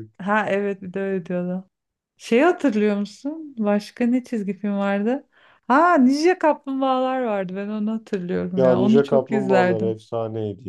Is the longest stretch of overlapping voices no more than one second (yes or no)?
no